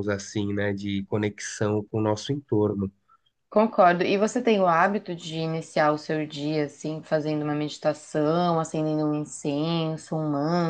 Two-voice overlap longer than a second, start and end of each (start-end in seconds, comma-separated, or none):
none